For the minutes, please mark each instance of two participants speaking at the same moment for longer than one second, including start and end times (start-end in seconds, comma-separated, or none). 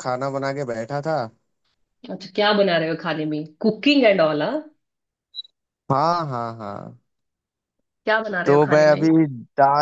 none